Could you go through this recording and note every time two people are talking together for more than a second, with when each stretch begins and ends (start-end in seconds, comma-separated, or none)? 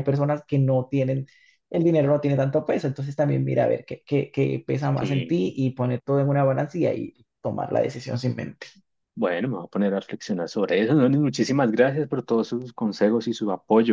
none